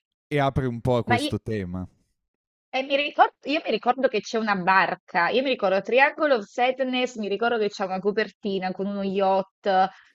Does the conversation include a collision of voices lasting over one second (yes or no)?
no